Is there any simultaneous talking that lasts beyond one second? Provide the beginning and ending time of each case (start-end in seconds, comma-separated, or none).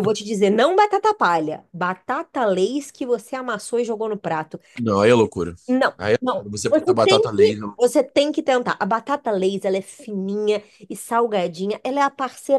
6.0-7.8